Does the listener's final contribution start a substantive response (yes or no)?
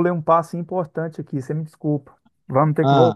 no